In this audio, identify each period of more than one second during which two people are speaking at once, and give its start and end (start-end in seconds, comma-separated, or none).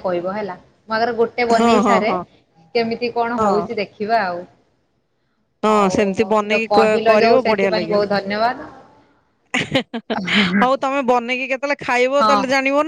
5.7-8.0